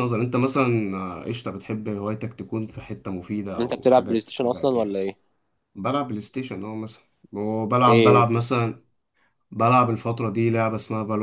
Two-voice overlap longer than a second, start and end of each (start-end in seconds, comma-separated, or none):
3.6-5.0